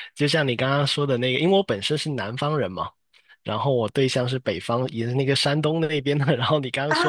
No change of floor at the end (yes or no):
yes